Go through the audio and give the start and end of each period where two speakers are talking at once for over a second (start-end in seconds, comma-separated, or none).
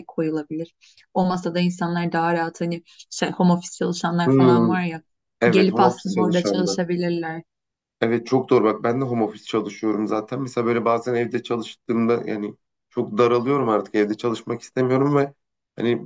5.5-6.8